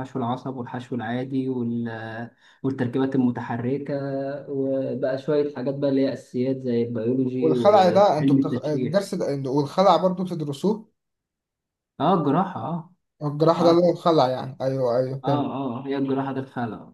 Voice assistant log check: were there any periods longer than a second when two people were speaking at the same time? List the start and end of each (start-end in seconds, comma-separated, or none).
7.4-9.1